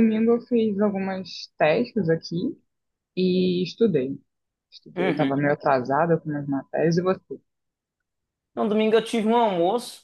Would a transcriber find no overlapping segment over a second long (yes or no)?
yes